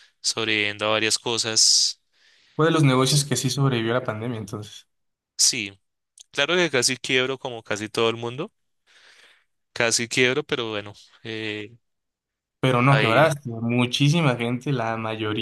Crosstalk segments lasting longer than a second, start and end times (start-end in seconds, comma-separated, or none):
none